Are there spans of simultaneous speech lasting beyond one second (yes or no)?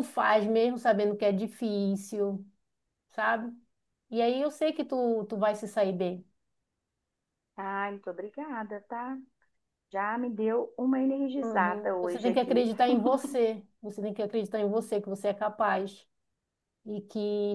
yes